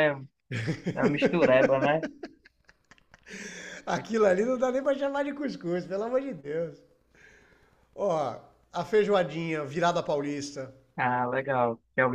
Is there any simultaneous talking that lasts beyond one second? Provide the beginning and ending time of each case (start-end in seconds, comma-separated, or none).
none